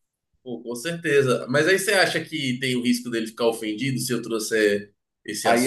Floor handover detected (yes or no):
yes